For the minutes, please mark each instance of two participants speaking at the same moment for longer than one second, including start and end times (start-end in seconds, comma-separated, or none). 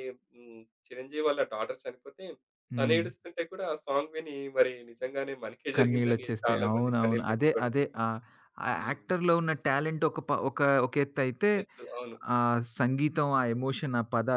5.8-7.7